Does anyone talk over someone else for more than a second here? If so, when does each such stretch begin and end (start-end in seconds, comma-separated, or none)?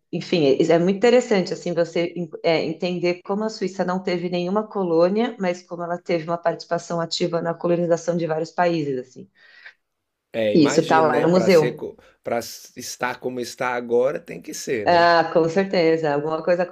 10.5-11.8